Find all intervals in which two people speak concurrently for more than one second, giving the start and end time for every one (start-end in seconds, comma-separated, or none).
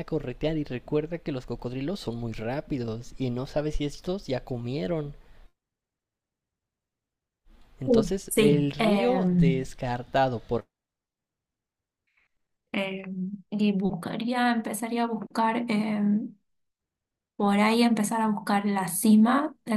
7.8-9.7